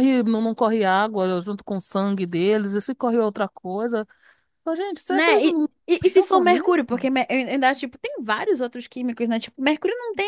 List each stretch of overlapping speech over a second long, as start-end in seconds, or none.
5.1-7.1